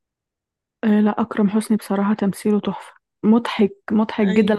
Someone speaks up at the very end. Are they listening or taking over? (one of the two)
listening